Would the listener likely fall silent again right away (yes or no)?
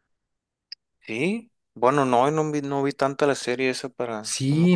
no